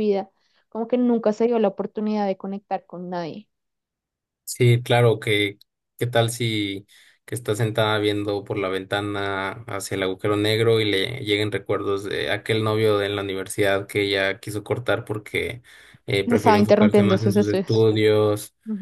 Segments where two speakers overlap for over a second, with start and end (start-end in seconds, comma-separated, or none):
16.2-17.9